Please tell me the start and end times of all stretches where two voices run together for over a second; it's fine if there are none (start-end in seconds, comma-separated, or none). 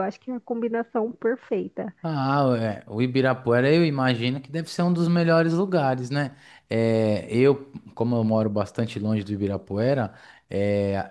none